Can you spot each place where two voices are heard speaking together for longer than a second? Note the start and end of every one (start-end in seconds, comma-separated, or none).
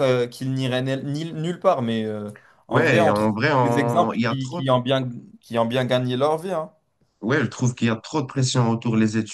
2.7-4.6